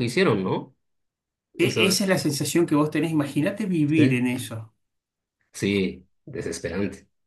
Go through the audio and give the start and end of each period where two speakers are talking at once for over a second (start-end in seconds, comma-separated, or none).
none